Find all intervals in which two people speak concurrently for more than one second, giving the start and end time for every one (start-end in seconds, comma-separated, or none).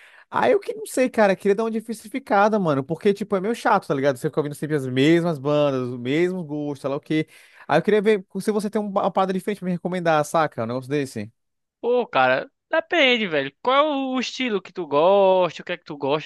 none